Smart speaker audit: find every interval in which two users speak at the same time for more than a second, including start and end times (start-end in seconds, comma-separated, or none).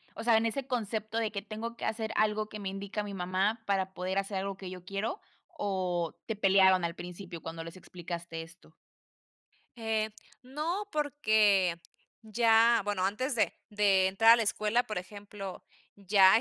none